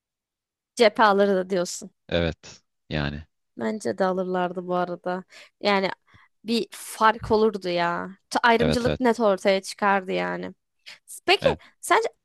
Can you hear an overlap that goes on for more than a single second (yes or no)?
no